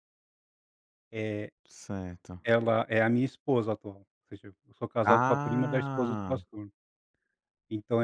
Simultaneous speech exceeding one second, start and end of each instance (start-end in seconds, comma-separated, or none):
5.0-6.4